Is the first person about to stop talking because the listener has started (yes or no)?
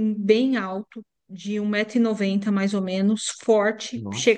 no